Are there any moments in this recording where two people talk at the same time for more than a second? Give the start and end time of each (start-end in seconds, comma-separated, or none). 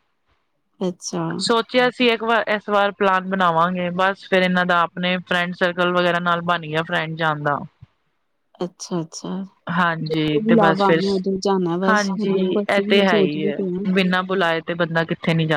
11.9-13.6